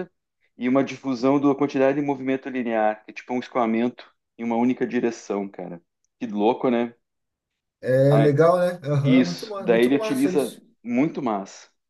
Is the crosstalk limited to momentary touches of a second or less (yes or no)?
no